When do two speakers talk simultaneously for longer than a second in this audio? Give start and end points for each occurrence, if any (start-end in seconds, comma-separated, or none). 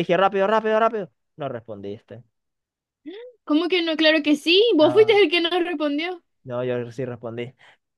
none